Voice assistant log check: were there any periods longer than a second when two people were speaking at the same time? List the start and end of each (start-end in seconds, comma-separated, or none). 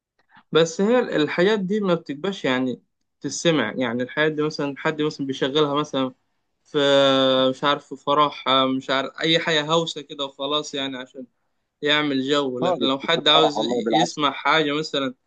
12.6-14.2